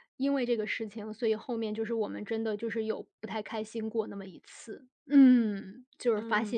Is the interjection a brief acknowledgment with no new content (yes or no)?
no